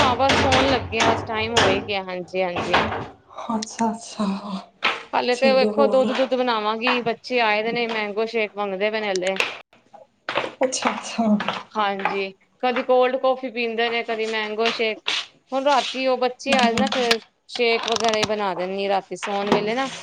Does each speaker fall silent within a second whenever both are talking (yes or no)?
yes